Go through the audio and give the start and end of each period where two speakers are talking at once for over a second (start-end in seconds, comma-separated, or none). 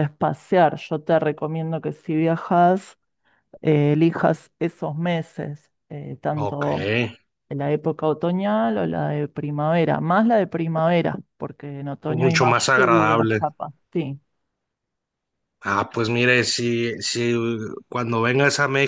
12.1-13.5